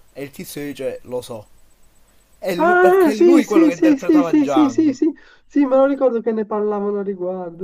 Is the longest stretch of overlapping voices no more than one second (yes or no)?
no